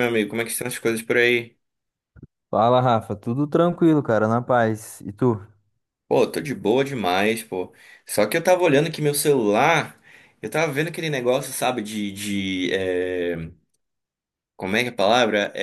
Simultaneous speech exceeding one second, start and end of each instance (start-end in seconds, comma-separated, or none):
none